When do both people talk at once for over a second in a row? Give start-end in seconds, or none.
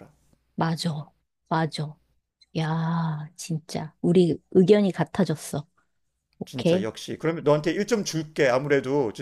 none